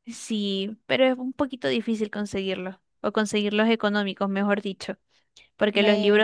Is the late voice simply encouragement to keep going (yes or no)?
yes